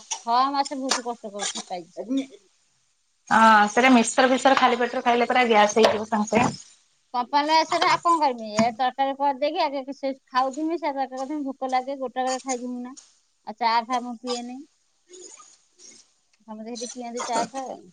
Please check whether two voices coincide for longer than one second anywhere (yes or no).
no